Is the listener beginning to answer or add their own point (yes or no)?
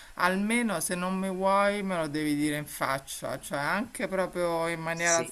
no